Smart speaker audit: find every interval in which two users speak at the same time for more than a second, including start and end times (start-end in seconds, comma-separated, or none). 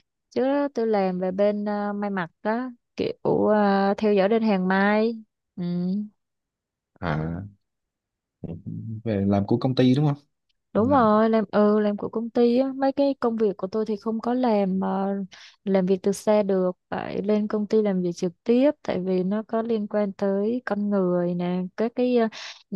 none